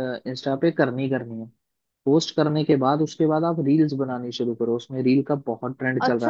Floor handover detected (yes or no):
yes